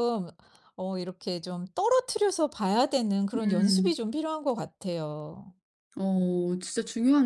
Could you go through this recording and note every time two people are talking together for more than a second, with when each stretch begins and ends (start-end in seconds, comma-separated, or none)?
none